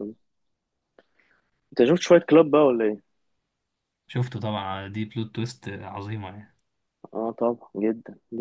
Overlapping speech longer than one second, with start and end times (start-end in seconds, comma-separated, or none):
none